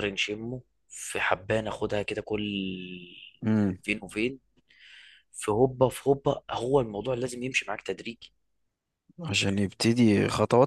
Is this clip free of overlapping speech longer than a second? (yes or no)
yes